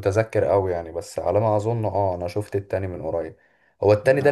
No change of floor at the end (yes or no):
yes